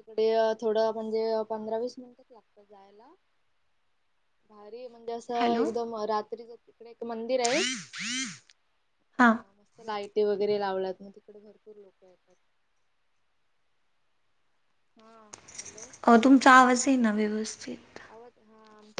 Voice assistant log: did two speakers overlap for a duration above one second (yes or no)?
no